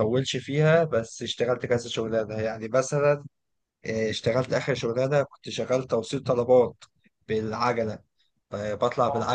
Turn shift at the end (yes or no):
no